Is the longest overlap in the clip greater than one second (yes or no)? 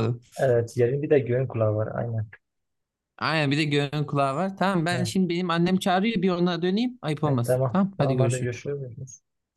yes